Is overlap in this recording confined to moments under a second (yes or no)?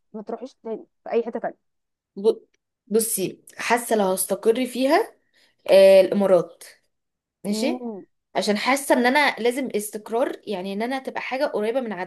yes